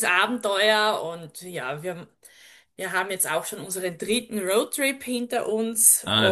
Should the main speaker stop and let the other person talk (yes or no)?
yes